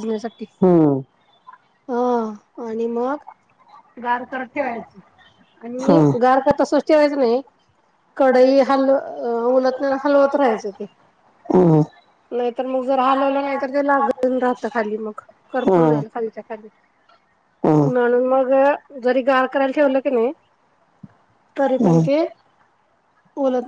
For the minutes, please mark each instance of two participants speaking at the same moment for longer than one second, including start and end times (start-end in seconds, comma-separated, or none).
none